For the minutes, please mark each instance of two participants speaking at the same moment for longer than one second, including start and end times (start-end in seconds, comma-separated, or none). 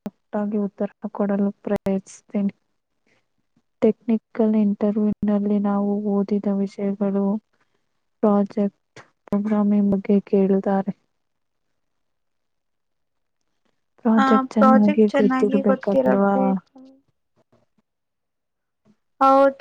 14.2-16.3